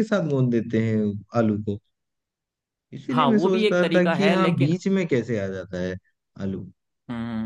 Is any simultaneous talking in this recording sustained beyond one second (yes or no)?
yes